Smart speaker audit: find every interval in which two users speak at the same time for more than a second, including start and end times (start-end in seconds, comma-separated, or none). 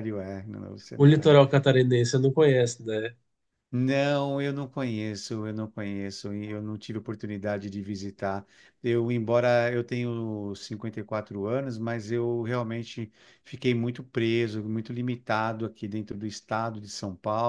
none